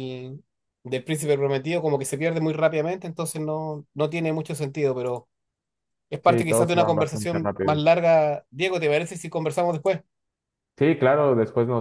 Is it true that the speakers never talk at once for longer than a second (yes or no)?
no